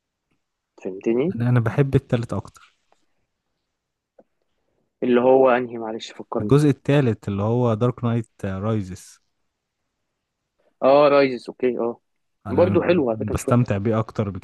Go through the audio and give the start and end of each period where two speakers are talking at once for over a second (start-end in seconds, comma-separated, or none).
12.5-13.8